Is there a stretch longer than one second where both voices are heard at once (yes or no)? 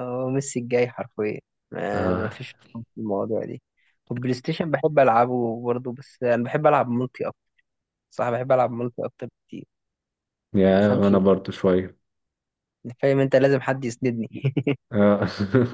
no